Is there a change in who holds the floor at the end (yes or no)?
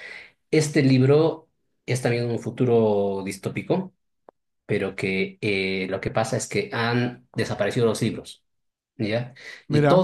no